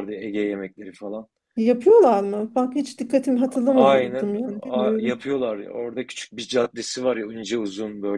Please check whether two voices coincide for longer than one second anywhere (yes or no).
yes